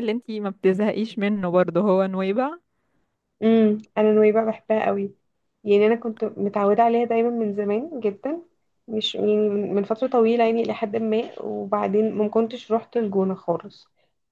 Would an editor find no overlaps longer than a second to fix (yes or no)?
yes